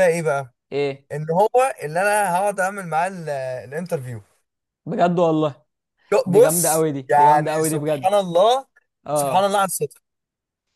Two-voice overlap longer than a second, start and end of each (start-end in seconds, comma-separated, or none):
6.2-8.2